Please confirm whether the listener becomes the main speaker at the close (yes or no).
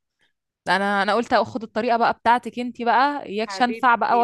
yes